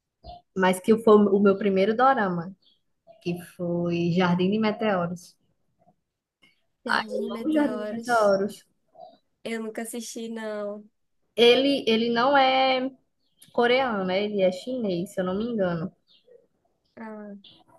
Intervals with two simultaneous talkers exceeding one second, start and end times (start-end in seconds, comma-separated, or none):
6.8-8.3